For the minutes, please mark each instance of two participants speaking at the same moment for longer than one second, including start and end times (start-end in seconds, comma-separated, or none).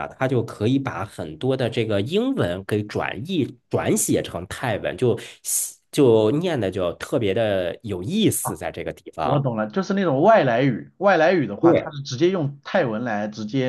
none